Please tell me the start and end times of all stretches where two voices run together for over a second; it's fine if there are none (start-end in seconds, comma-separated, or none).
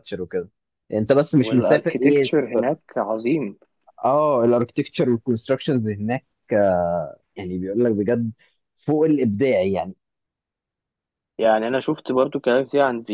1.3-2.7